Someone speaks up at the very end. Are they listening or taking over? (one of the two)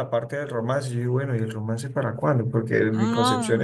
listening